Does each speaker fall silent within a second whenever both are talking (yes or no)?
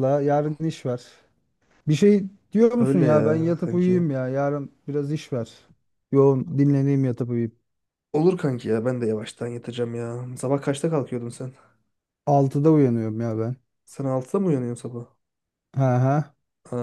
no